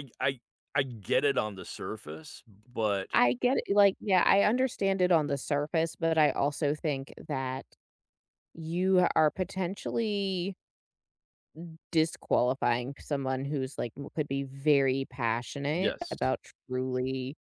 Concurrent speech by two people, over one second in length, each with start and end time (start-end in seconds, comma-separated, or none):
none